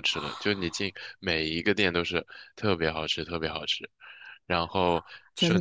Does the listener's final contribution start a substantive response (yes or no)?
no